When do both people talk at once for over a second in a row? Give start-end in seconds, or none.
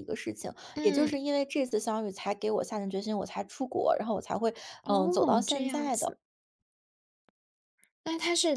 4.8-6.2